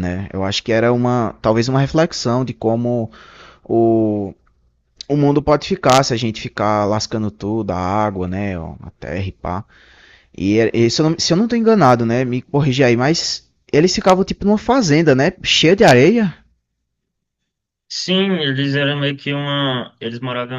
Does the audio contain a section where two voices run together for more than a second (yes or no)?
no